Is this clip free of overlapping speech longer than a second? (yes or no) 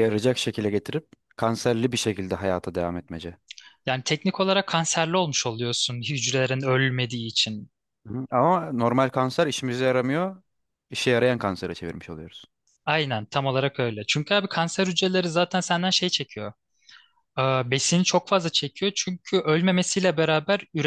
yes